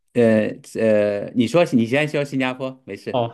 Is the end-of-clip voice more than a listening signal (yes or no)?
yes